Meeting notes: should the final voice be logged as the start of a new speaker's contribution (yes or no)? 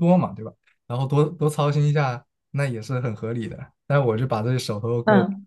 yes